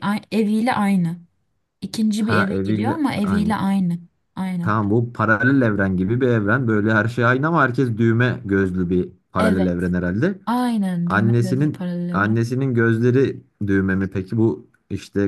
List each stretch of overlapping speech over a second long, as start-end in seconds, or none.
2.2-3.5, 11.1-12.4